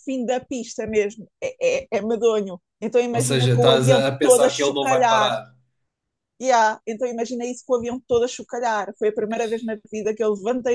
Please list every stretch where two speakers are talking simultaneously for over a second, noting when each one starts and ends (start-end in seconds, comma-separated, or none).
3.1-5.3